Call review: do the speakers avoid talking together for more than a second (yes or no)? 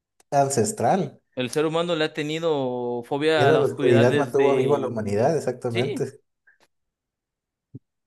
no